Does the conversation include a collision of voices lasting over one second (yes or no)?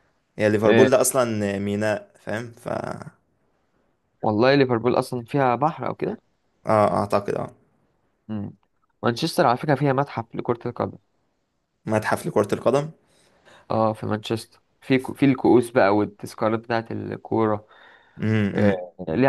no